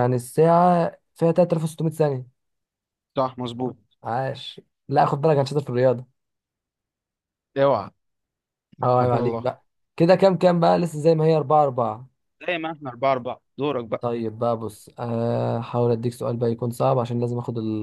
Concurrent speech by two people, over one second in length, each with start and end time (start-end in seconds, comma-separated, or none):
none